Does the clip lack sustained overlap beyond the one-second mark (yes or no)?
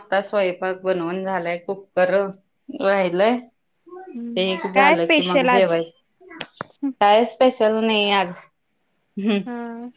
no